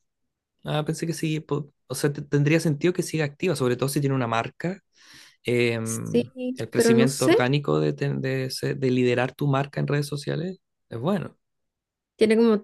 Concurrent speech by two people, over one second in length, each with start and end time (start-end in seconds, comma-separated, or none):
5.8-7.5